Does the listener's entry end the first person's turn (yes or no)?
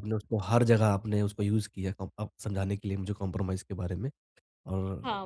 yes